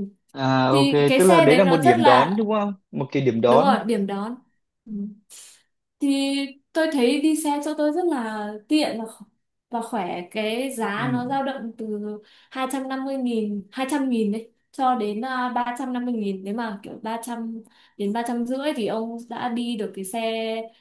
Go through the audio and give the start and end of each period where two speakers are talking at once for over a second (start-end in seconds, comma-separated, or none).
0.7-2.4